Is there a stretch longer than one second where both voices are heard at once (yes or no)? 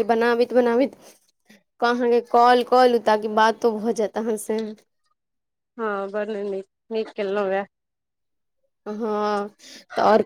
no